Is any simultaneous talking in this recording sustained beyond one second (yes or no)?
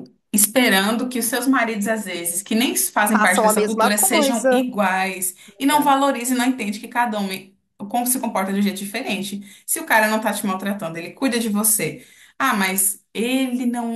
yes